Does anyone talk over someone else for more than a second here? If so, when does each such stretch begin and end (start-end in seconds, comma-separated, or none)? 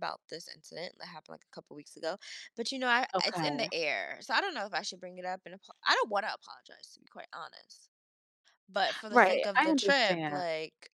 9.1-10.4